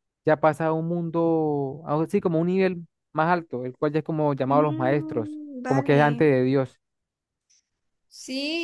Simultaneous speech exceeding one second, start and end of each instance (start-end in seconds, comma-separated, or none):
4.5-6.2